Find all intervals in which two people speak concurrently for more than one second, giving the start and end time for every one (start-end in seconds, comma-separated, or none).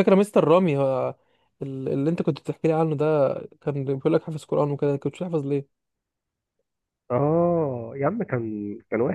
none